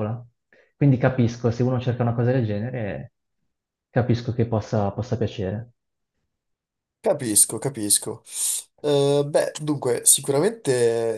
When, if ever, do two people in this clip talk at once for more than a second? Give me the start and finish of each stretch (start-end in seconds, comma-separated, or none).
none